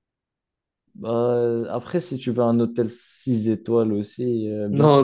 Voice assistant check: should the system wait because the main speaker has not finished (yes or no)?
no